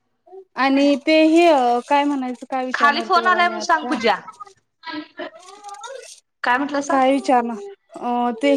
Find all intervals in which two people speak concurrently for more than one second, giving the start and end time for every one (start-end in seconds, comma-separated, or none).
2.8-4.0